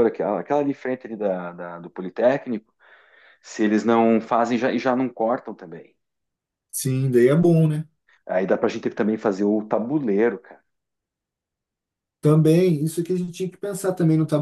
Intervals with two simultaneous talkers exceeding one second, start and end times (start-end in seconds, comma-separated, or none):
none